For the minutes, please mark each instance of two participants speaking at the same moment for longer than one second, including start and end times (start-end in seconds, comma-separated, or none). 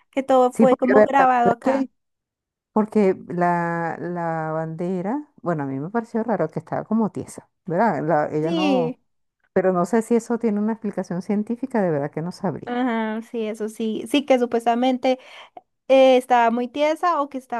0.5-1.9